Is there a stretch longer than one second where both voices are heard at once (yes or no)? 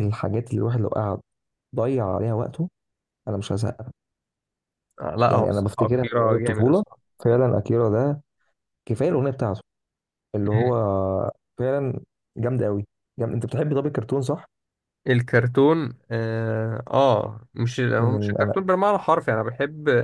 yes